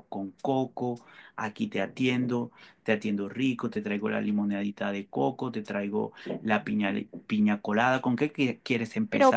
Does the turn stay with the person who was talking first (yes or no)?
no